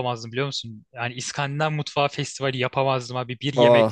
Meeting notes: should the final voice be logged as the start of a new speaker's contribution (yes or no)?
no